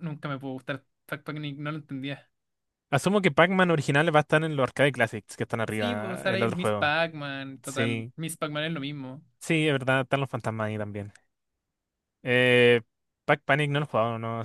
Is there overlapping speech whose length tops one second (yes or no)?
yes